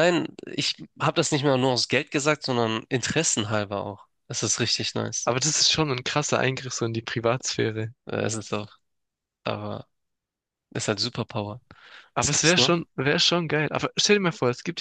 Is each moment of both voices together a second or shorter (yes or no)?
yes